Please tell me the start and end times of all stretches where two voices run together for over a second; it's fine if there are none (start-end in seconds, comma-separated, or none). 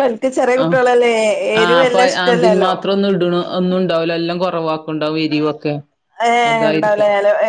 none